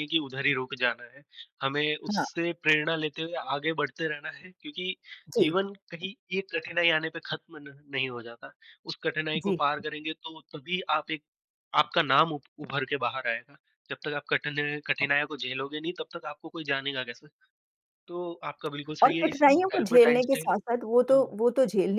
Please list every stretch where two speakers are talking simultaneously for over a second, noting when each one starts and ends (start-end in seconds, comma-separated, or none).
19.0-20.5